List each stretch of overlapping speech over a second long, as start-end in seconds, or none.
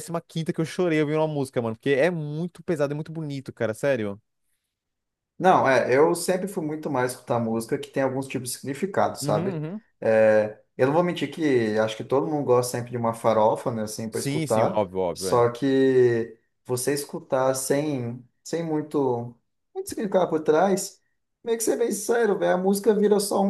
14.1-15.5